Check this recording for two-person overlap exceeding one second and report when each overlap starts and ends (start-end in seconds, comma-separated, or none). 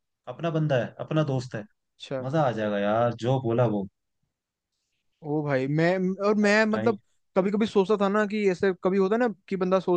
none